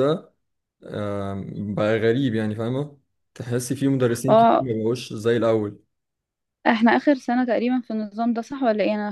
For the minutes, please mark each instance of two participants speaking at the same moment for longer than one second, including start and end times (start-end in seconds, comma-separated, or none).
none